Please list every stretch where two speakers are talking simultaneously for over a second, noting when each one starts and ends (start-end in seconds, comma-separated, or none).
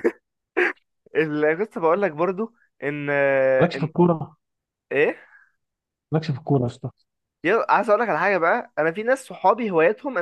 none